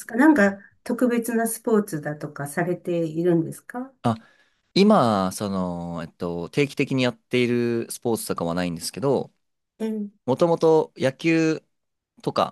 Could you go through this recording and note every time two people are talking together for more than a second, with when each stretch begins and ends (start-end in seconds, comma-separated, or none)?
none